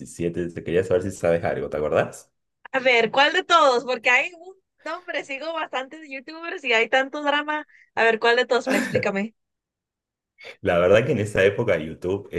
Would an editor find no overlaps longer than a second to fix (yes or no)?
yes